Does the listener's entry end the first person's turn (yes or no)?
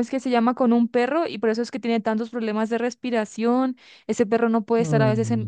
no